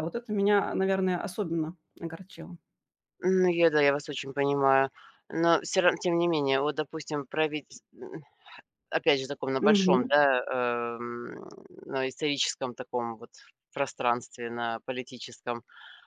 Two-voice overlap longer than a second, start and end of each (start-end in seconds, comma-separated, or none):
none